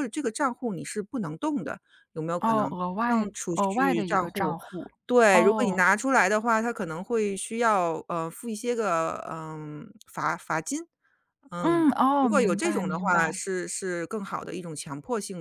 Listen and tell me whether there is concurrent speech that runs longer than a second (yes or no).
yes